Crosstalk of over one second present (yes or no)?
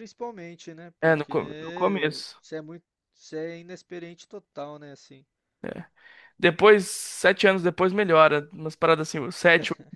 yes